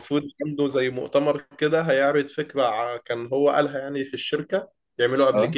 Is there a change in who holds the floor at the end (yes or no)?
no